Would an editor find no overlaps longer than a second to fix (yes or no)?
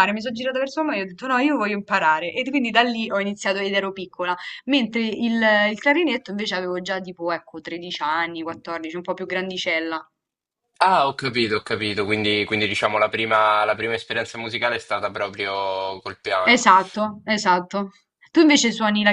yes